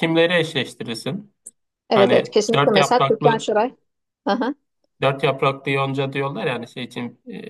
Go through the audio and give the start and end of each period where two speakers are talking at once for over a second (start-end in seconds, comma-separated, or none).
1.9-3.5